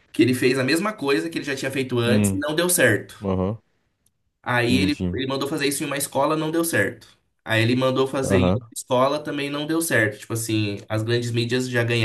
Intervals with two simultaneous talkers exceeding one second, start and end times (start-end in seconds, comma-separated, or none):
none